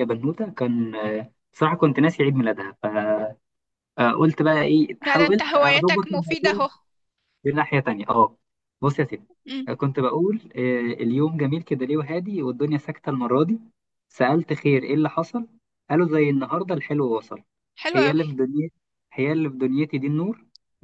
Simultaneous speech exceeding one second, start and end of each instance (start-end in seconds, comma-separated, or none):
5.0-6.7